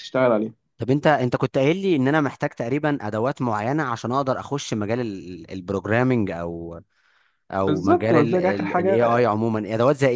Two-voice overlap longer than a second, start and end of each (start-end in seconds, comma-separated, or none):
7.7-9.2